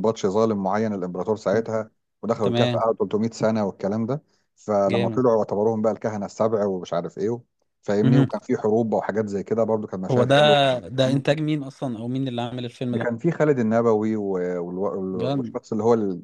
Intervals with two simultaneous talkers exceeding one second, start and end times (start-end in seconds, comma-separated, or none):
none